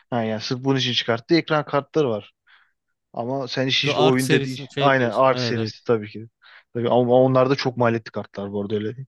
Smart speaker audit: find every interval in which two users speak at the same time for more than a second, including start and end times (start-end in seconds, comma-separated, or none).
3.8-5.7